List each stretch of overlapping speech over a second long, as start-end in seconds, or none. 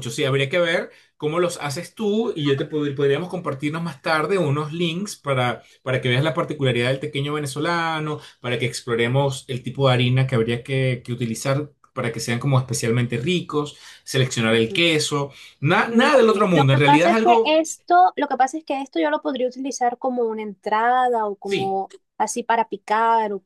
15.8-17.6